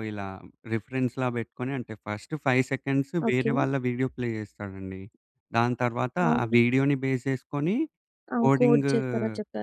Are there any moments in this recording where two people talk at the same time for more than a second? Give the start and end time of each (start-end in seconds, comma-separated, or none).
none